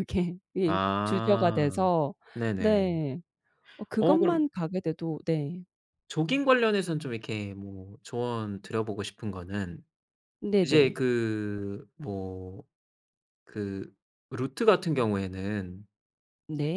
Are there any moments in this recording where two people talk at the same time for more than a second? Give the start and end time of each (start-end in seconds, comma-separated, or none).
0.6-1.9